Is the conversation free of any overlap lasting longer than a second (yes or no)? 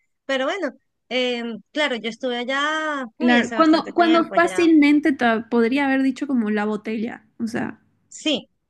no